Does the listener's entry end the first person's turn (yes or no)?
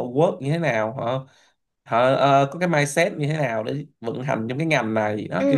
yes